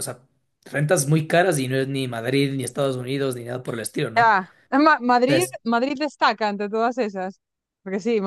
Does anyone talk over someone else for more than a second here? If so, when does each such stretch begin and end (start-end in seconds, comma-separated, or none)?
none